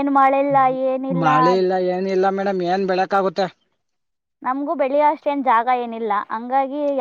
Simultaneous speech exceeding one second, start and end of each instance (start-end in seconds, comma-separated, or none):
none